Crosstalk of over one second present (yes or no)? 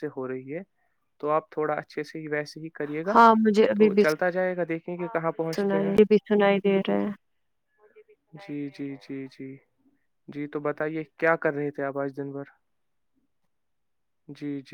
no